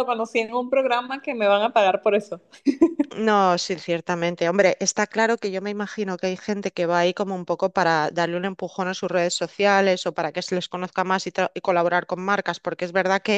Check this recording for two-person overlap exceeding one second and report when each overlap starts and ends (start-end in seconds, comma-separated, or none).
none